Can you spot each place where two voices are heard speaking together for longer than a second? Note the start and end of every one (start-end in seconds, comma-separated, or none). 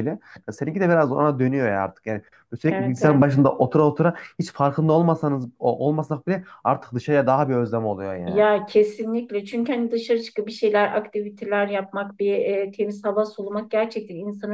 none